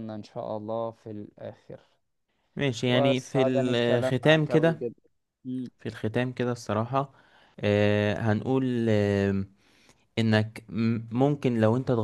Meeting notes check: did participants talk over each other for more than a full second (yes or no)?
yes